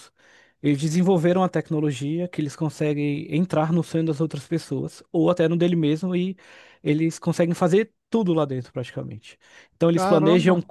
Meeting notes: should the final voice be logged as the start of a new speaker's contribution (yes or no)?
no